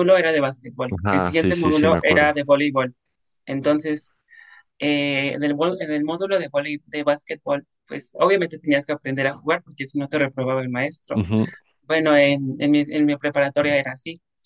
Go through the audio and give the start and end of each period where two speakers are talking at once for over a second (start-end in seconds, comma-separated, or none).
1.0-2.3